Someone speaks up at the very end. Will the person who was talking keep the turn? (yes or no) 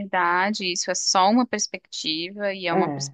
yes